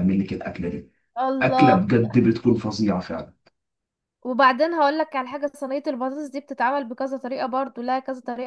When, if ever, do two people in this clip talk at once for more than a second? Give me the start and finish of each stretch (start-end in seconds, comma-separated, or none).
none